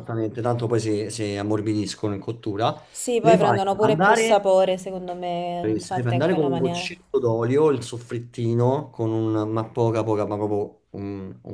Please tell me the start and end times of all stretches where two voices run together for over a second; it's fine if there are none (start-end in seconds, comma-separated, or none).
3.2-4.5, 5.6-6.9